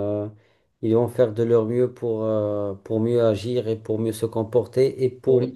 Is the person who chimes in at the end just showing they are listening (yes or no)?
yes